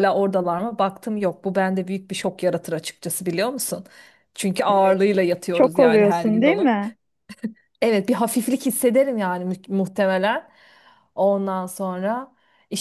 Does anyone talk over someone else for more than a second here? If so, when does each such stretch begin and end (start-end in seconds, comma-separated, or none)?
4.7-6.7